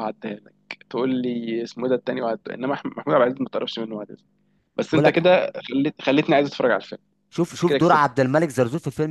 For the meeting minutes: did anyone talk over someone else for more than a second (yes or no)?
no